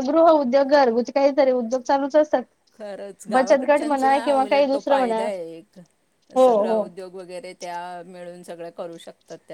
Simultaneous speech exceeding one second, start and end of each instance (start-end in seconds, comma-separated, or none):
3.3-5.2